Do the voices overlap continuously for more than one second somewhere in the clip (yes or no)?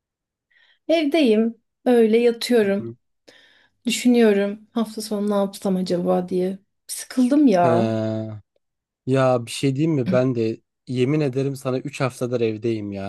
no